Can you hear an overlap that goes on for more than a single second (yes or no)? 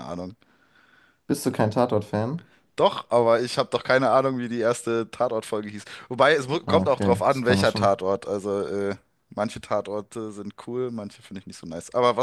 yes